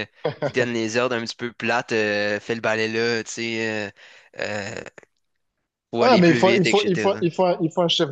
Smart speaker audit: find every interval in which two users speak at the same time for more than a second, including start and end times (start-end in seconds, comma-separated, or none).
6.0-7.2